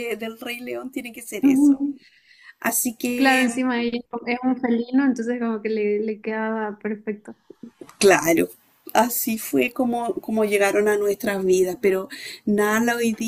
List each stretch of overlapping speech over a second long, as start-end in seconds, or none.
none